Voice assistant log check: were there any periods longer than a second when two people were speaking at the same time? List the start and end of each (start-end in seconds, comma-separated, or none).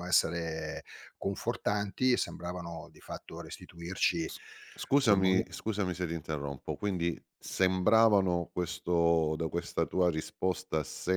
none